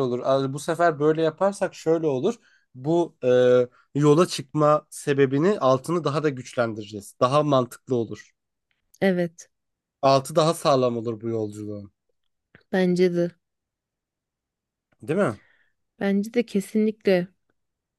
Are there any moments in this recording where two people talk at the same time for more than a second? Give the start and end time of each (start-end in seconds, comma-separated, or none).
none